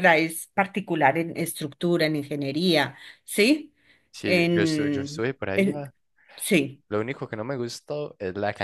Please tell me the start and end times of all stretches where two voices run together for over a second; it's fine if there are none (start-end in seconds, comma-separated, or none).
4.2-5.9